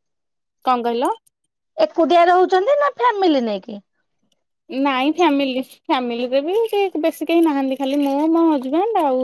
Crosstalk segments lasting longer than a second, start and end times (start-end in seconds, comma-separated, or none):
none